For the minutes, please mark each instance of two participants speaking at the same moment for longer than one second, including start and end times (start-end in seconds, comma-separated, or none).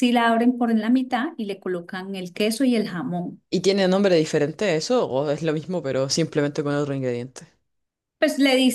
none